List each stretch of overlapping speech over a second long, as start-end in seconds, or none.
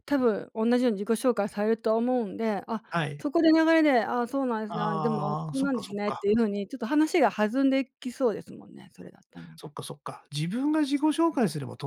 4.7-6.2